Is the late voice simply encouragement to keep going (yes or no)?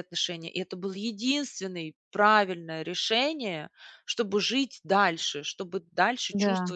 yes